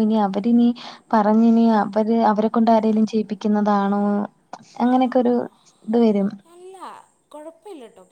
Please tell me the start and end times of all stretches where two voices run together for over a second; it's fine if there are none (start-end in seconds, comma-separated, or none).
none